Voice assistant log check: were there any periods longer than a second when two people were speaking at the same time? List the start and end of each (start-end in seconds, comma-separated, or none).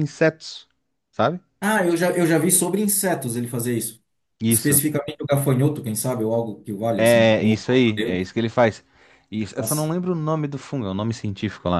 7.0-8.3